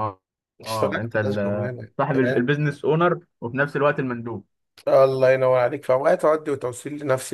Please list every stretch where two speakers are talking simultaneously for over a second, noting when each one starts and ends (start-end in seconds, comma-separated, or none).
0.7-2.5